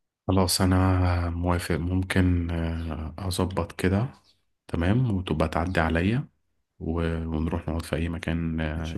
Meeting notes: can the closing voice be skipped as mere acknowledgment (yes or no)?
no